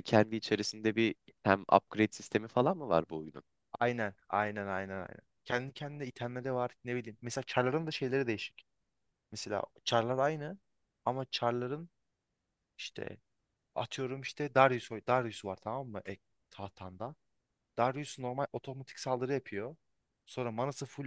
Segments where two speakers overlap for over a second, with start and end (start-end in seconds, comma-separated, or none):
none